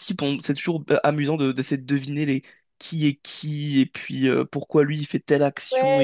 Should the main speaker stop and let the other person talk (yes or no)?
yes